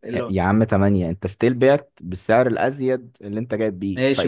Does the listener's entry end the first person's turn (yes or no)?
yes